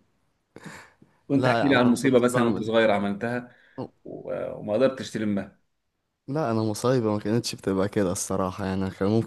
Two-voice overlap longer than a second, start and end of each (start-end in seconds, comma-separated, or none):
1.3-2.7